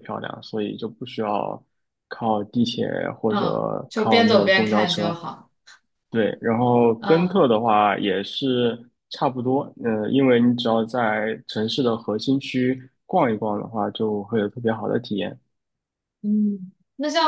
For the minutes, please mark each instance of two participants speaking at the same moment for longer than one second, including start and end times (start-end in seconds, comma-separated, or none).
3.3-5.2